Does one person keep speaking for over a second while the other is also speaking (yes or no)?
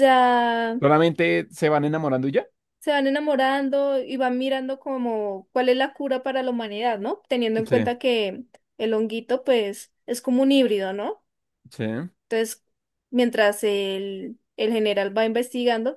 no